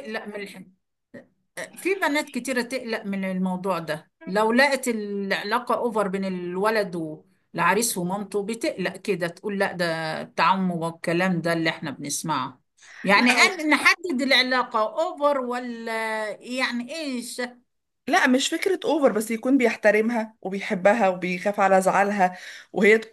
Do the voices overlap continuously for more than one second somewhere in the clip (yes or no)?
no